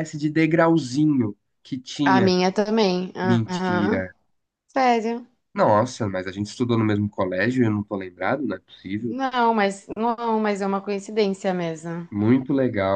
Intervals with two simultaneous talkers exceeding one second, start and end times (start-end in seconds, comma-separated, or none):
none